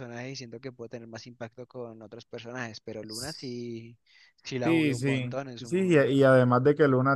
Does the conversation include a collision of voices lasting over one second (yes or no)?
yes